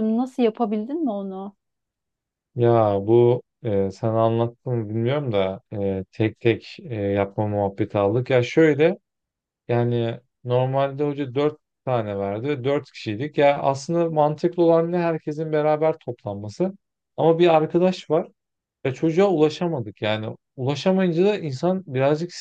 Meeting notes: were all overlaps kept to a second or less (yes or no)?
yes